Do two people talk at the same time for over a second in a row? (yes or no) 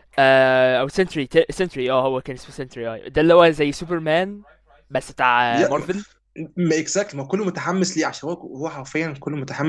no